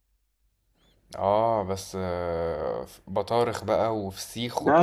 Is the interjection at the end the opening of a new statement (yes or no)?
yes